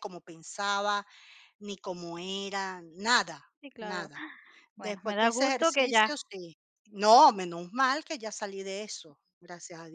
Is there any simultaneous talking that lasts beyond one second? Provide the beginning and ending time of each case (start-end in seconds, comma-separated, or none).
4.8-6.1